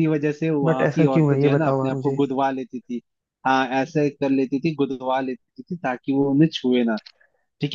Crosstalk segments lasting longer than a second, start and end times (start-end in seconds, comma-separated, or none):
0.6-2.2